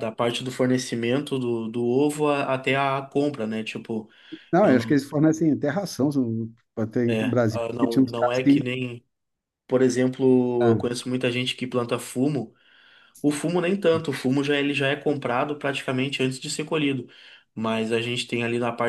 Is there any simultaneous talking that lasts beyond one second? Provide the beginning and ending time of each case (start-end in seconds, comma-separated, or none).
7.1-8.6